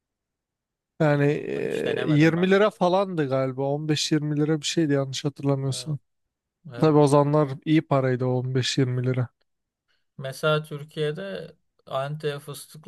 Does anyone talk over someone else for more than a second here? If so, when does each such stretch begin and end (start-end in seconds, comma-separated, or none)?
1.3-2.8